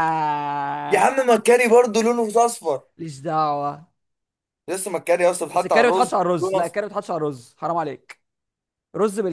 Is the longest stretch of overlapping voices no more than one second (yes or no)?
no